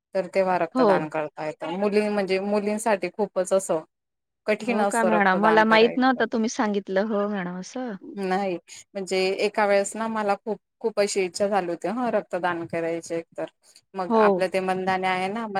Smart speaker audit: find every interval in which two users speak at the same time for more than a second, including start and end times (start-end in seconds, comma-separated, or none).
4.7-6.2